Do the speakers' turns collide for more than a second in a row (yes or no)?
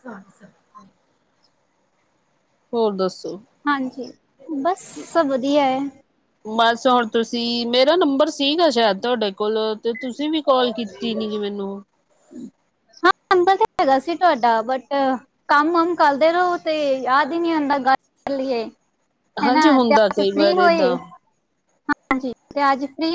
yes